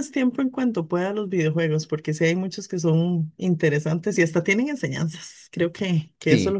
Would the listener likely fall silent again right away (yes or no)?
yes